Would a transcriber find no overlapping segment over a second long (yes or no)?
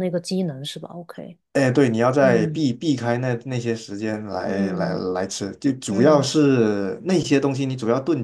yes